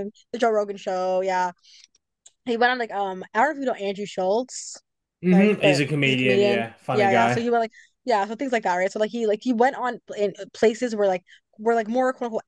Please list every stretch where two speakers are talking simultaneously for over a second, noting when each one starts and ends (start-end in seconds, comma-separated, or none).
5.3-7.5